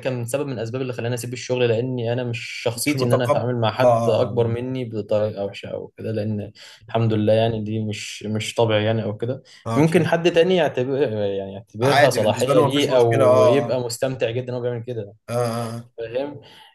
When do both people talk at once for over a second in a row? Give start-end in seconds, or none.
2.8-4.5, 11.8-13.8